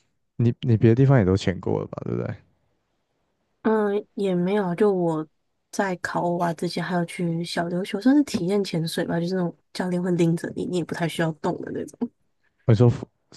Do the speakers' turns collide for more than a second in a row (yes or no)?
no